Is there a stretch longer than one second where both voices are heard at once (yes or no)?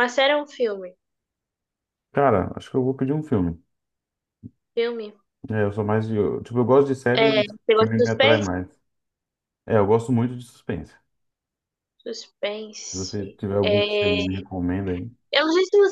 yes